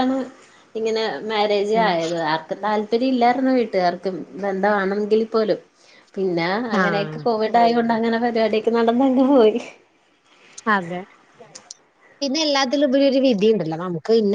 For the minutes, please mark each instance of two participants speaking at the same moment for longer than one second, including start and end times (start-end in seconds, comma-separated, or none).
none